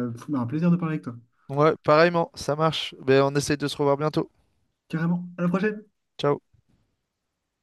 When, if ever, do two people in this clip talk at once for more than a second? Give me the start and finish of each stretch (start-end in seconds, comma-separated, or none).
none